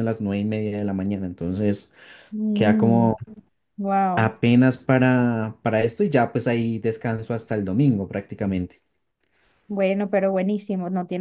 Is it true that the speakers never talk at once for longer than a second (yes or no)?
yes